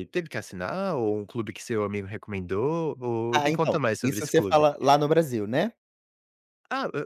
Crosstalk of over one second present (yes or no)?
yes